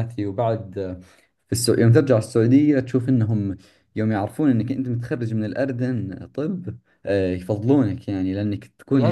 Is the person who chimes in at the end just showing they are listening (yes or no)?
yes